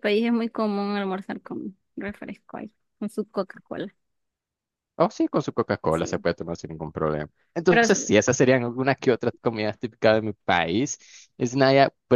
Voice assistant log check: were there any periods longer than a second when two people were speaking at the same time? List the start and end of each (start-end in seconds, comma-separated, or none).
none